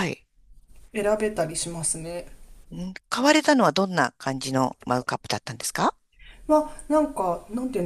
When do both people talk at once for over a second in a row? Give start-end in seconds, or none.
none